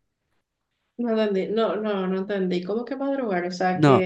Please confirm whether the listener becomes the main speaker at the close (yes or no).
yes